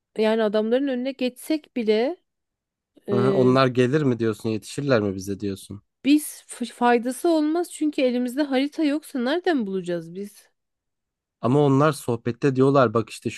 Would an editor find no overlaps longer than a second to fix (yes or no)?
yes